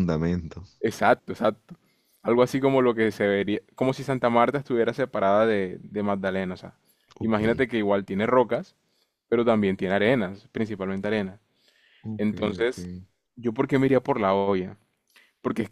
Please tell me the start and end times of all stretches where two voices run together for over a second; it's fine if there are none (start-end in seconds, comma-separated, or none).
none